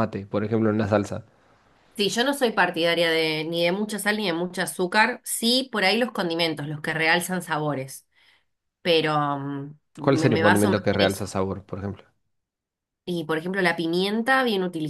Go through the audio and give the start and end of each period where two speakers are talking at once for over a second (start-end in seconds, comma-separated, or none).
10.0-11.3